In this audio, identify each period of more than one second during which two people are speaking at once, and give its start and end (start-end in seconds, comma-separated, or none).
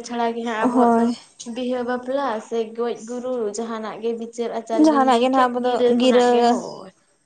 4.7-6.6